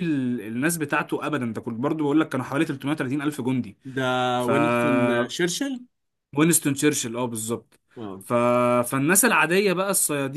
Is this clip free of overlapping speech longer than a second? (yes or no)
yes